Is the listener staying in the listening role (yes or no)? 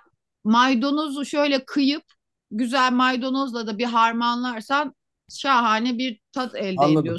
no